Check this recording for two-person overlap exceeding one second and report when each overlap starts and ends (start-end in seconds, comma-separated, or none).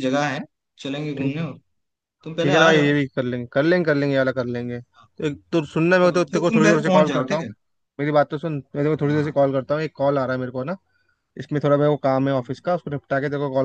6.0-7.5